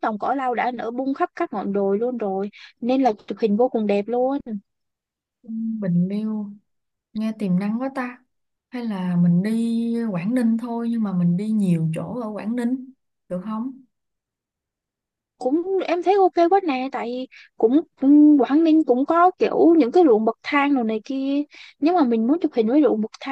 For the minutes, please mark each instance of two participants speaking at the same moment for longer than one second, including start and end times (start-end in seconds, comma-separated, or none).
none